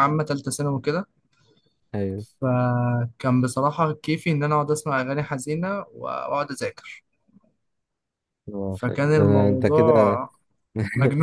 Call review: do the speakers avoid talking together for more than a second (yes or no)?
no